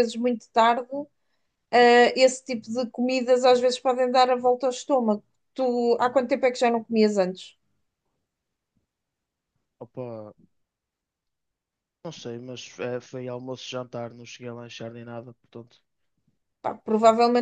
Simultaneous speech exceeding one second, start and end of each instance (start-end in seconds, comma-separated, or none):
none